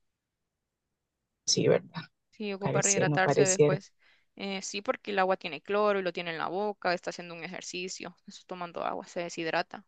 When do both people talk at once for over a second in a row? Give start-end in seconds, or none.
2.6-3.8